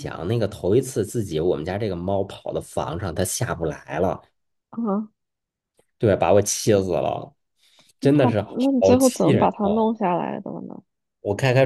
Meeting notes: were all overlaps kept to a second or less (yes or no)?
no